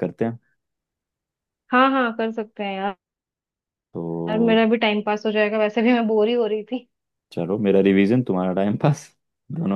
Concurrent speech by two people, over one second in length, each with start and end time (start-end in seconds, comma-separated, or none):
none